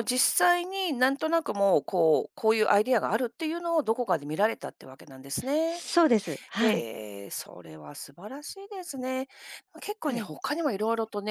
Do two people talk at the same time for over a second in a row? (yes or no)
no